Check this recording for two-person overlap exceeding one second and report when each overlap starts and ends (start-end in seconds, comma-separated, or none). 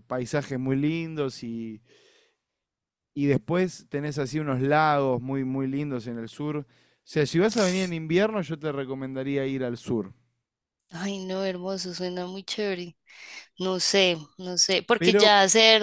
none